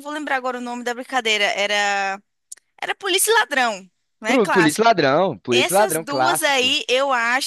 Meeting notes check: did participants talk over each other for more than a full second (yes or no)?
yes